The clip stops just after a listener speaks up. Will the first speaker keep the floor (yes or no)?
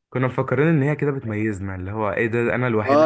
no